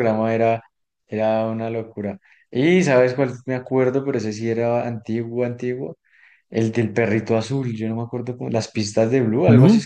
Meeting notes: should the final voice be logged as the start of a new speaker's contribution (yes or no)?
yes